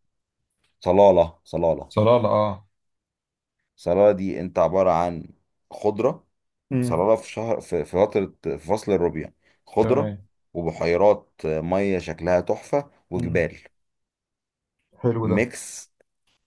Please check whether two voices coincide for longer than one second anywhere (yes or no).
no